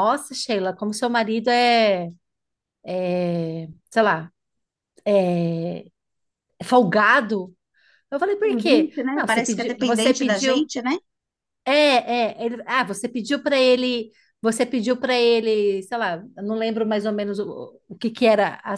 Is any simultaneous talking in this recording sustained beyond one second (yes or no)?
yes